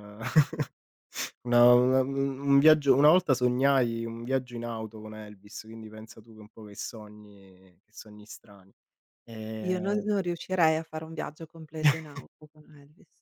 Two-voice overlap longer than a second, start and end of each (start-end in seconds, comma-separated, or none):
none